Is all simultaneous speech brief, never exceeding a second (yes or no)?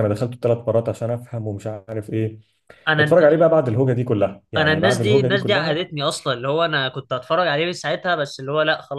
no